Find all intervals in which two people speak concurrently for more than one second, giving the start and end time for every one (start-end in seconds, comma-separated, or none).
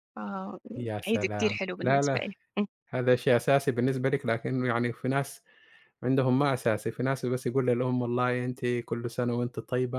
0.8-2.2